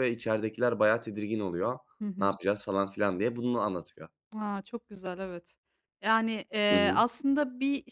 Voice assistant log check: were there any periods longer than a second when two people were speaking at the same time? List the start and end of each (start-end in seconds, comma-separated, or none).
none